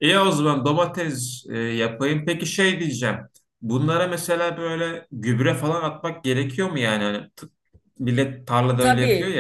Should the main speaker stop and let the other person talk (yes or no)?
yes